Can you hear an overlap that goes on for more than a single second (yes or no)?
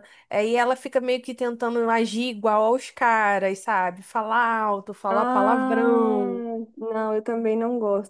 yes